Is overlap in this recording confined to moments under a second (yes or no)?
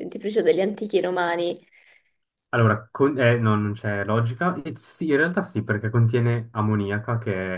yes